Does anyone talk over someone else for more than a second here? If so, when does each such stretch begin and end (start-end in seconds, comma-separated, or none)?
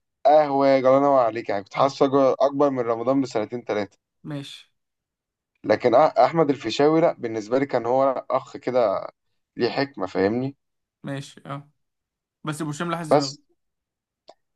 none